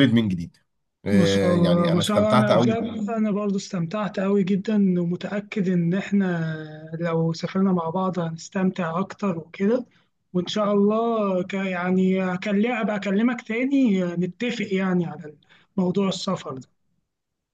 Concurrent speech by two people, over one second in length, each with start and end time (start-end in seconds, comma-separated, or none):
1.1-2.6